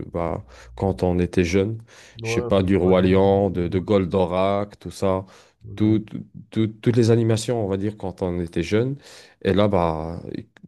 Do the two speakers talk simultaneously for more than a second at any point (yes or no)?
yes